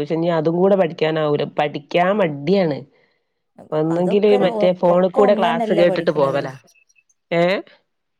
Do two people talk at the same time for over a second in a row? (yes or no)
yes